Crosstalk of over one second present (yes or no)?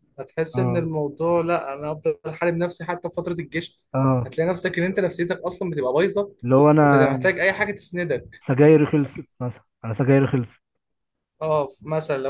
no